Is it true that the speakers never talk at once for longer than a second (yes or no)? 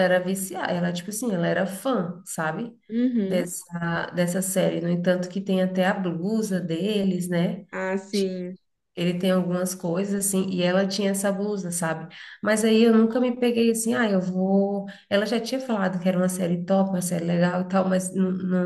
yes